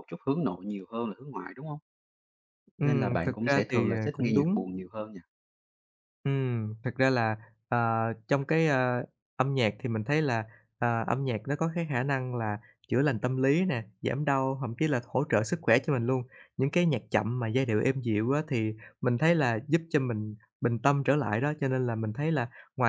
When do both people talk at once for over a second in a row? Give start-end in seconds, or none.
2.8-4.7